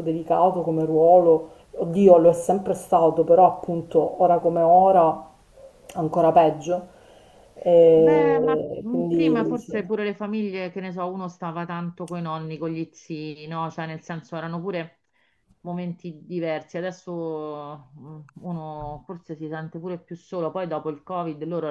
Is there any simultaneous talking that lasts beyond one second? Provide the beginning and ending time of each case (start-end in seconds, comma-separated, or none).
8.0-9.8